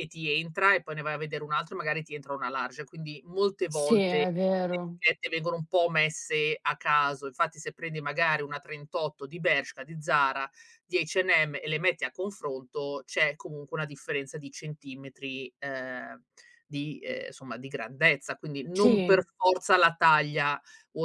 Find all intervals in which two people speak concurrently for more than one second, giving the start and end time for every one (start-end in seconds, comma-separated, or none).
3.7-5.0